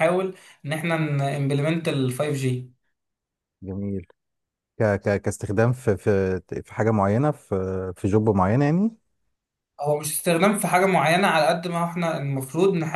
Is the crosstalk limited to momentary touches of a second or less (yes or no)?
yes